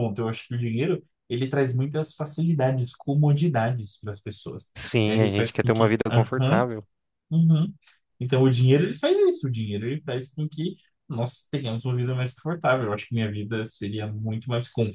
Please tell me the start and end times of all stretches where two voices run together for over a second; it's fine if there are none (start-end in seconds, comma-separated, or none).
5.0-6.6